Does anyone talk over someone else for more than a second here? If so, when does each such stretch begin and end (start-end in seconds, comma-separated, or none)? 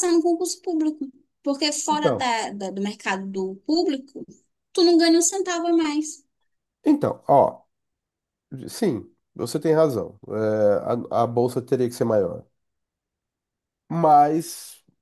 none